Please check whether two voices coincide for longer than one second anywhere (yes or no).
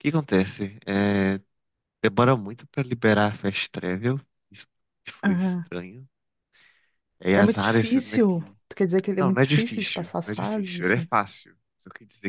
yes